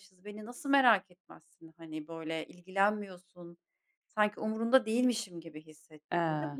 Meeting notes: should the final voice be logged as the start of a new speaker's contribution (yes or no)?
no